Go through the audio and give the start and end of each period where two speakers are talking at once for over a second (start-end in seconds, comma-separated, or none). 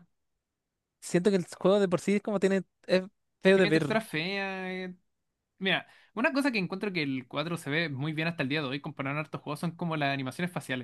none